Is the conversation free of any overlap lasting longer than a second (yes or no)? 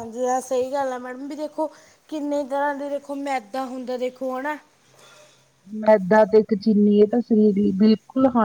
yes